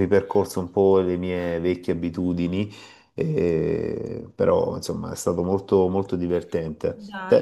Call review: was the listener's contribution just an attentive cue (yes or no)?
no